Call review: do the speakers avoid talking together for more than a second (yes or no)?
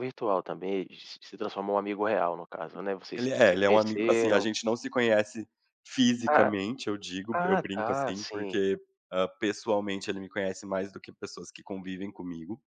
no